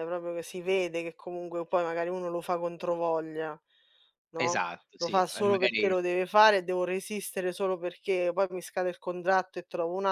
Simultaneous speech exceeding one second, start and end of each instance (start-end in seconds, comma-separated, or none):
4.4-5.9